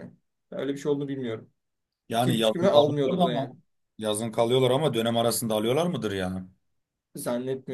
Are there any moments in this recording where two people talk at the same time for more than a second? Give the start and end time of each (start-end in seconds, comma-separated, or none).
2.2-3.5